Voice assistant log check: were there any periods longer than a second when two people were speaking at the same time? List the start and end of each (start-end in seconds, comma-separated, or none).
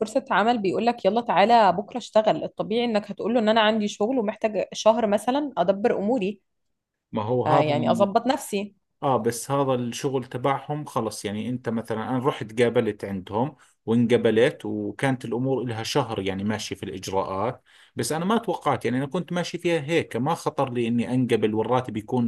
none